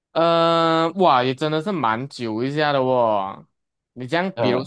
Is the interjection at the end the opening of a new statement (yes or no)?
no